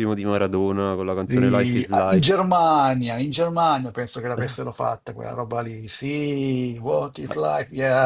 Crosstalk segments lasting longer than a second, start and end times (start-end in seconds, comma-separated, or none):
1.0-2.4